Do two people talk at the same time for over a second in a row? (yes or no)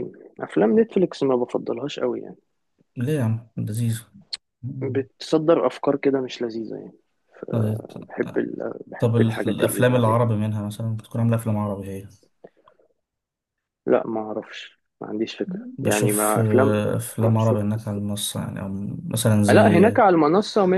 yes